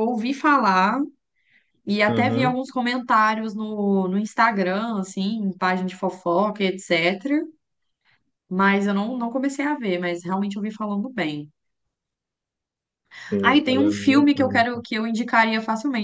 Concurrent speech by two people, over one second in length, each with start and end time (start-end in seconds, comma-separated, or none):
13.4-14.8